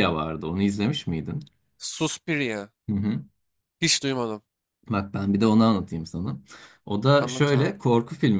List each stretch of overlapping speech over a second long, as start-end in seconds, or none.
none